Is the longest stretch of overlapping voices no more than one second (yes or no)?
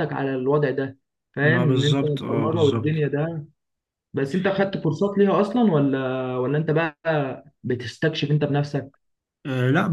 no